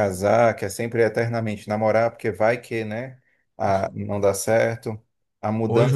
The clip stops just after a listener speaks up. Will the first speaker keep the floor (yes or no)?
yes